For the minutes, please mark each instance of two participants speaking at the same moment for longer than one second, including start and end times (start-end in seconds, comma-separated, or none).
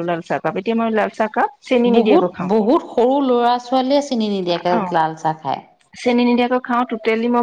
none